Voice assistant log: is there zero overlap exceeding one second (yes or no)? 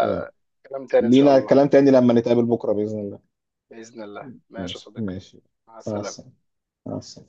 yes